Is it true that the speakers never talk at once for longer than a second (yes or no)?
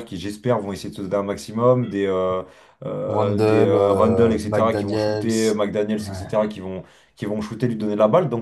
no